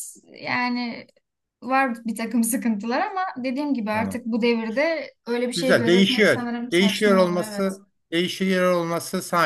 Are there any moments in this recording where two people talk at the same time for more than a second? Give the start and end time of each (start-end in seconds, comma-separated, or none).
5.5-7.8